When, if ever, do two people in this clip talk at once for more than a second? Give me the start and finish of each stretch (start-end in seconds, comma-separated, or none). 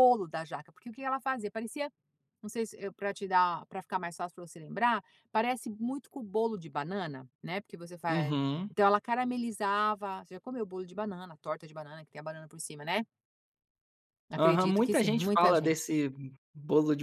14.4-15.8